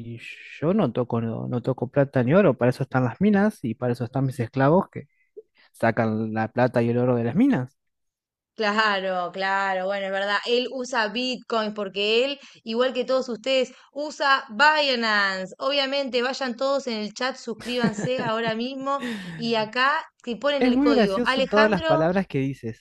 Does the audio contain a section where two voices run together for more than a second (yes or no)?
yes